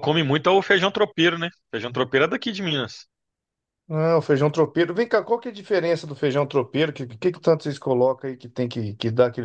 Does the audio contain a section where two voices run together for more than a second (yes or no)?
no